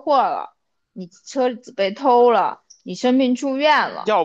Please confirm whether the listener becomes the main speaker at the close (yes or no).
yes